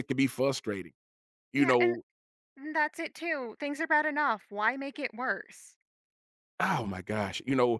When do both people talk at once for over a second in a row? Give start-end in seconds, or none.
none